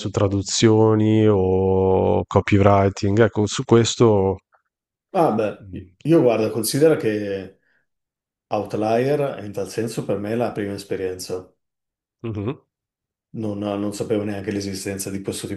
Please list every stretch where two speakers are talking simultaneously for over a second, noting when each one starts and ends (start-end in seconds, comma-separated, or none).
none